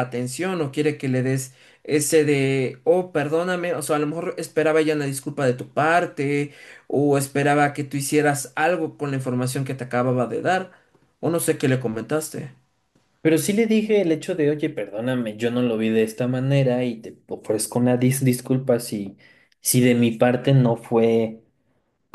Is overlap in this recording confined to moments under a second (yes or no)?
yes